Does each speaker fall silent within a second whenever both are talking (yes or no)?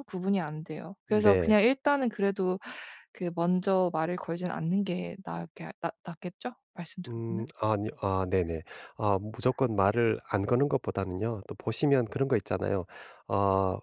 yes